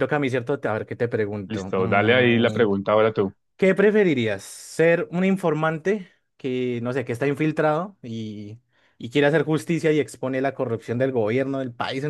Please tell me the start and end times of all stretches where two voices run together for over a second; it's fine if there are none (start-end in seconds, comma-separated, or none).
1.5-2.7